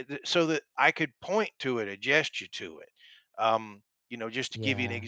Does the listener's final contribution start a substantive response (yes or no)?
no